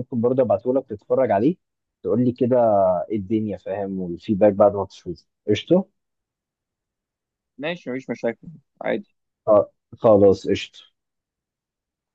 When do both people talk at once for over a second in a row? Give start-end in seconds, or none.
none